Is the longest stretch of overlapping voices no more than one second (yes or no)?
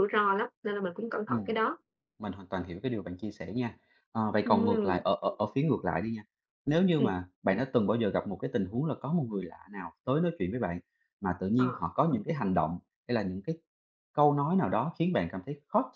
yes